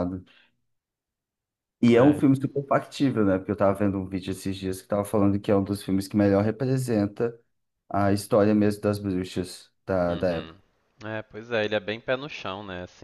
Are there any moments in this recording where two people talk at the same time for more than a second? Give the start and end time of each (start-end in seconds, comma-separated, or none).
none